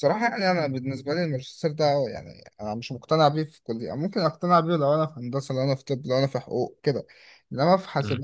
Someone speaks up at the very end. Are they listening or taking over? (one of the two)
listening